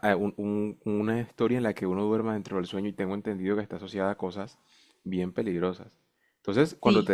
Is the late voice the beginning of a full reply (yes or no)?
no